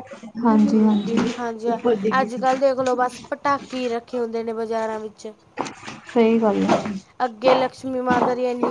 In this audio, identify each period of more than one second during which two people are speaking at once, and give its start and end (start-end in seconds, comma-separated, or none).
none